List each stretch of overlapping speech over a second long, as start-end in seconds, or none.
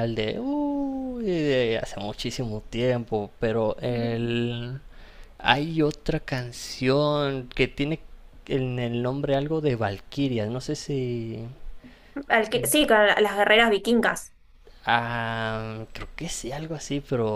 none